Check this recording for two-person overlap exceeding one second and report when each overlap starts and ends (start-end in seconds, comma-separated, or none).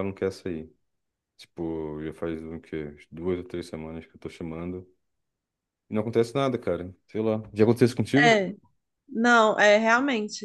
none